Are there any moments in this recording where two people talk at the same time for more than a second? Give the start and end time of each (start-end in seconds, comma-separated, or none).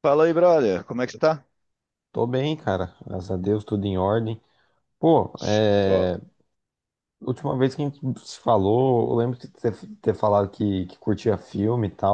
none